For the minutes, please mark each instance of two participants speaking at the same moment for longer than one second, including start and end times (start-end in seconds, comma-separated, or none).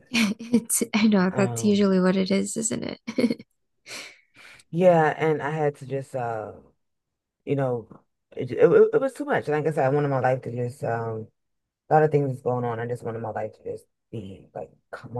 none